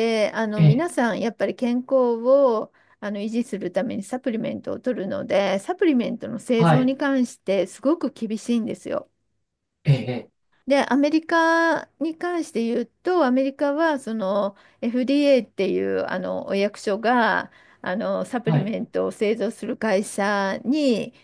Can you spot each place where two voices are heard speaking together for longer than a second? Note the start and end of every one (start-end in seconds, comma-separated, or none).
none